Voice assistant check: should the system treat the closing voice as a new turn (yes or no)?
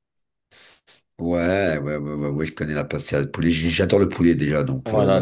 yes